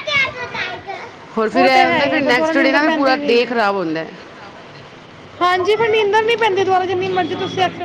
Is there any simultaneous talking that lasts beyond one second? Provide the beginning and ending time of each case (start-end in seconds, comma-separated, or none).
1.5-3.6